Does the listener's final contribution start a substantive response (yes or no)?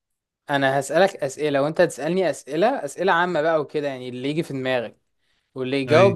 no